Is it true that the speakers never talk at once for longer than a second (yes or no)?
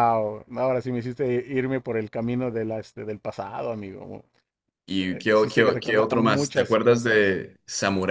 no